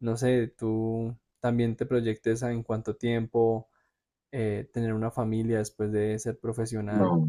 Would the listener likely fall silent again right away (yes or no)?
no